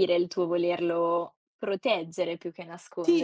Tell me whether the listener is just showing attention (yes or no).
no